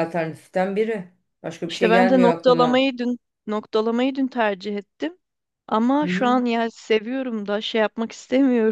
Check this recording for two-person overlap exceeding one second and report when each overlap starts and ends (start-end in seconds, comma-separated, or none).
1.6-2.9